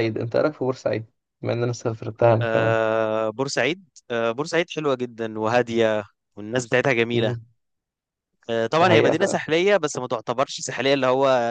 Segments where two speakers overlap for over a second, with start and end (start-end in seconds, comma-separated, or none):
none